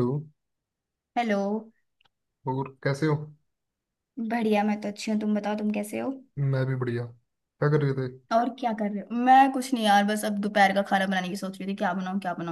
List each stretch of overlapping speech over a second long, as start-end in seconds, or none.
none